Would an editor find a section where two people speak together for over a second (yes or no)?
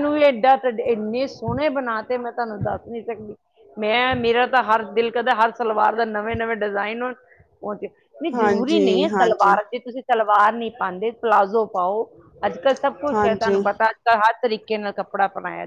yes